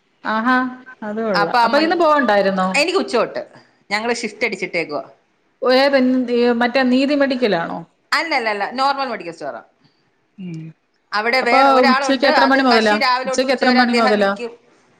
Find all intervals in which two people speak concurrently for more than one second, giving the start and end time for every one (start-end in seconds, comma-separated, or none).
11.4-14.3